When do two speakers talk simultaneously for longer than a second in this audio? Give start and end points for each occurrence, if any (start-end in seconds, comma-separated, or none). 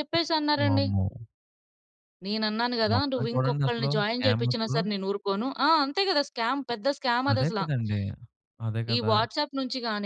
2.9-4.8